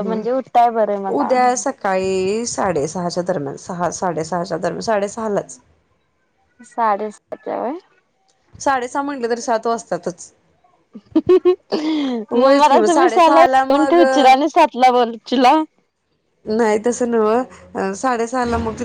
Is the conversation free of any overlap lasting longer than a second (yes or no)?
no